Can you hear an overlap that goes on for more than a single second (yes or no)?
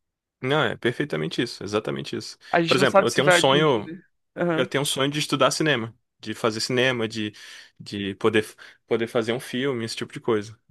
yes